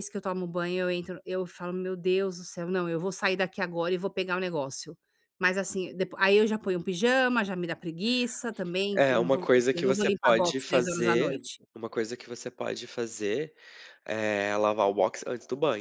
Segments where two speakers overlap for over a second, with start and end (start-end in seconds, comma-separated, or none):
8.9-11.6